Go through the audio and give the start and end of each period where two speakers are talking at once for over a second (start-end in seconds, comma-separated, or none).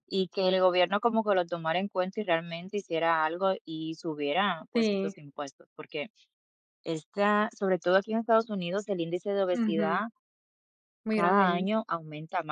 none